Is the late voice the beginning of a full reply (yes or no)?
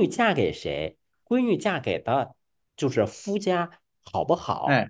no